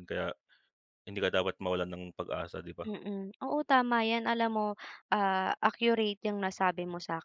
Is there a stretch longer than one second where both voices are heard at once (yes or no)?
no